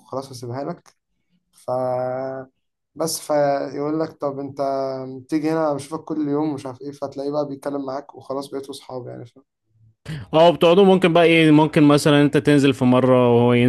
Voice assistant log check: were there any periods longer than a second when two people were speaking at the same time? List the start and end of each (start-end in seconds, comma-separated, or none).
none